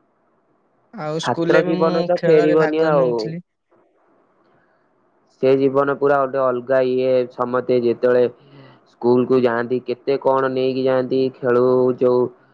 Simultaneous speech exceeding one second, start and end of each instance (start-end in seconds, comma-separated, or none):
1.2-3.1